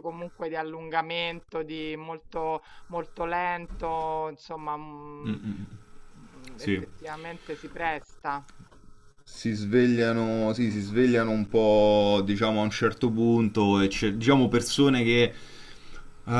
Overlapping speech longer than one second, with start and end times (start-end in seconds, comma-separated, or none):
none